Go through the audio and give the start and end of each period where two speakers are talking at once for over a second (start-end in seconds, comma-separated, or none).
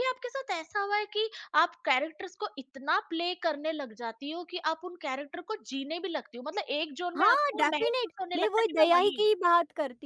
7.2-9.3